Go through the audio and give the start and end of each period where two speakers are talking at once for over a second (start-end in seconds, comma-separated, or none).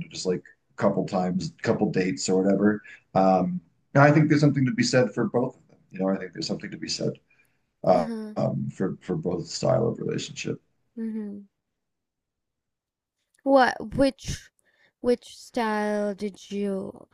none